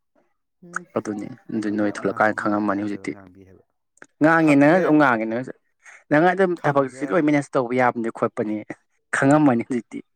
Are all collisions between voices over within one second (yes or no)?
no